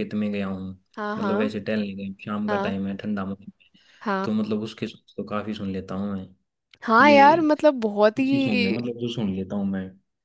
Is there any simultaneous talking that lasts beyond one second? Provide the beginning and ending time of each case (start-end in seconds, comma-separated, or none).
none